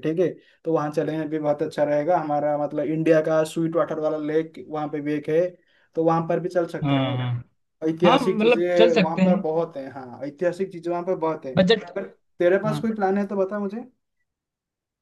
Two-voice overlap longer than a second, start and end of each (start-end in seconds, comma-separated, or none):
8.1-9.4